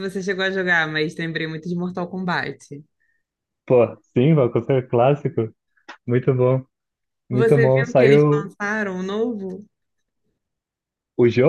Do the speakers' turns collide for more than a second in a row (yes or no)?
yes